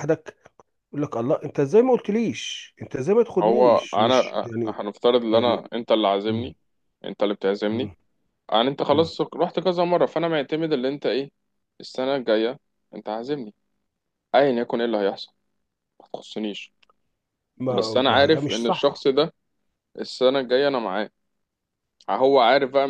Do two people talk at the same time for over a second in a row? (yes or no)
yes